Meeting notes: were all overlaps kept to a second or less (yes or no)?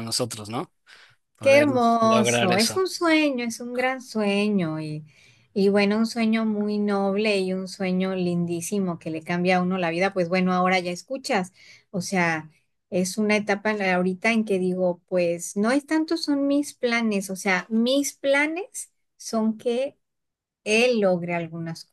no